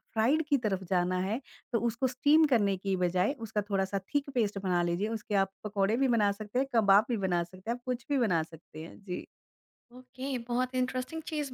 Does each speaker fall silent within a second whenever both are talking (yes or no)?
yes